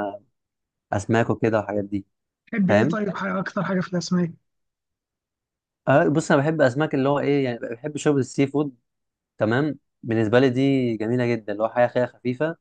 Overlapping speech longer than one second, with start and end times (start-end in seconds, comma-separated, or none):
none